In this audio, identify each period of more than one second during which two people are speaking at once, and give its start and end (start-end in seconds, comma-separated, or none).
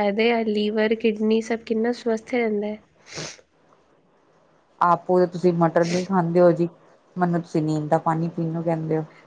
none